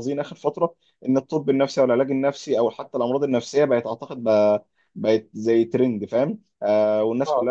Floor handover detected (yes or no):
no